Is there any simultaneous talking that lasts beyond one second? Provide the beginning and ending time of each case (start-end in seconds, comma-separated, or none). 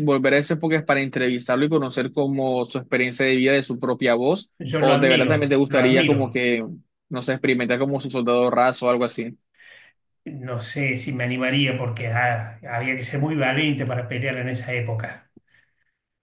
4.6-6.4